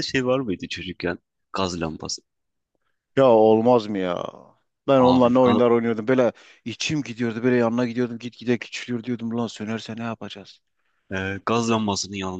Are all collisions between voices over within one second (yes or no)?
yes